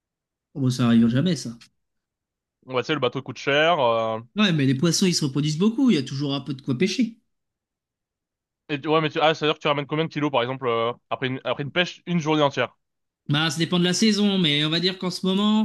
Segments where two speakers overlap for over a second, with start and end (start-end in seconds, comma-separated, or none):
none